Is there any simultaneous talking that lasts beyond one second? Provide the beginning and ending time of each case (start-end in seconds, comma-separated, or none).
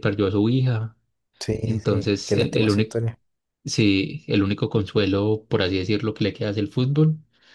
1.6-3.0